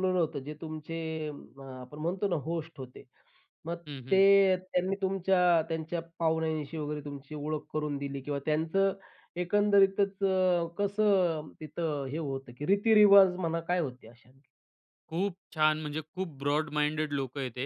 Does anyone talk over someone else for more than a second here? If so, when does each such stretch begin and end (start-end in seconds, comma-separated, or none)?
none